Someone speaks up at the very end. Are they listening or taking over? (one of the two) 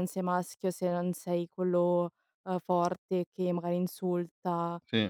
listening